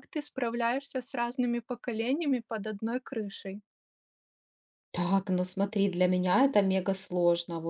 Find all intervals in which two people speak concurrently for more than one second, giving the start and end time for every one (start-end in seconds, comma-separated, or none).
none